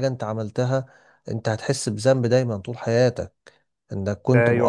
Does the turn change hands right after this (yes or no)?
yes